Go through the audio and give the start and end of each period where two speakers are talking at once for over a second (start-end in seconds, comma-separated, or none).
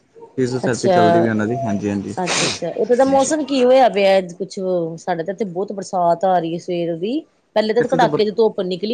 none